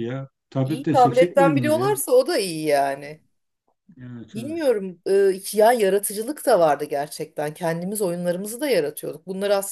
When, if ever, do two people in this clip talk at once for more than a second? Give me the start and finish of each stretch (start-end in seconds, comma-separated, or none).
0.6-2.0